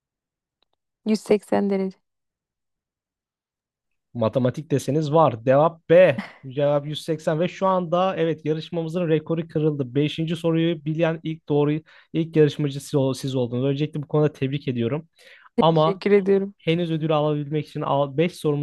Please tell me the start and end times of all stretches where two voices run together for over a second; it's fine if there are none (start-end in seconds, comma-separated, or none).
none